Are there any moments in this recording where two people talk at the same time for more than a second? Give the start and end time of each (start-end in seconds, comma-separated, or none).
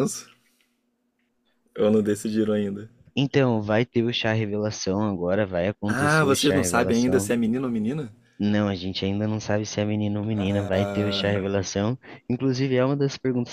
5.9-7.3